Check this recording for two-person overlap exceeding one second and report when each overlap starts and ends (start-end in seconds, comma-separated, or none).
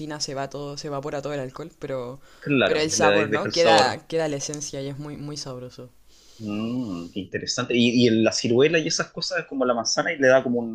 2.6-4.0